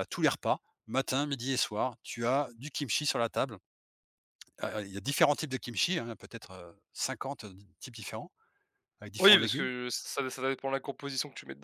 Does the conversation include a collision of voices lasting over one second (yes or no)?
no